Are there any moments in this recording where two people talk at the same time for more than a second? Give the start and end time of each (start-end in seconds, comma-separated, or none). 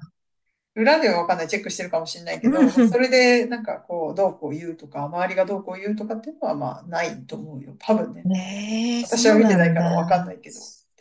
9.0-10.3